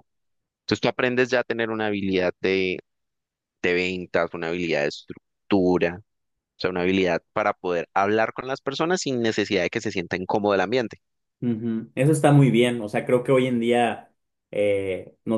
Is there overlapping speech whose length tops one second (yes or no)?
no